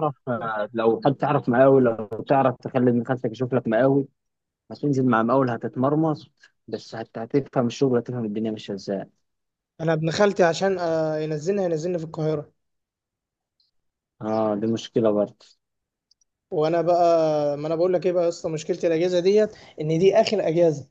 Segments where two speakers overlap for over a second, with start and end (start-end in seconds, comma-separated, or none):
none